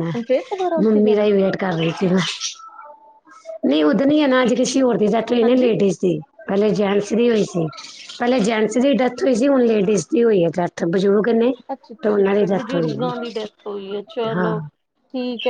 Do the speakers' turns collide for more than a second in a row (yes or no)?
yes